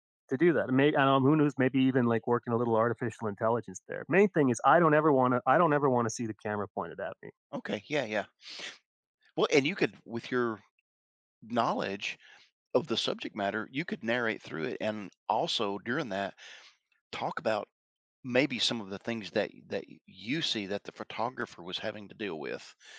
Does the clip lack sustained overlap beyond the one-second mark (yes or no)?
yes